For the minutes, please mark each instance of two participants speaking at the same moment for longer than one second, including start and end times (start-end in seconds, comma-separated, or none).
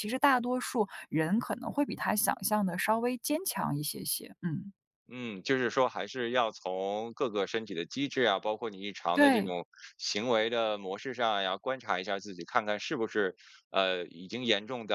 none